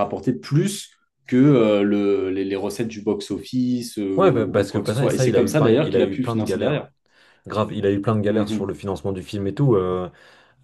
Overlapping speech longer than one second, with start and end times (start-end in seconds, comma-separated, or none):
4.2-6.8